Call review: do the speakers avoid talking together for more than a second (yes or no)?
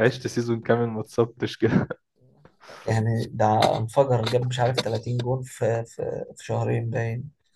yes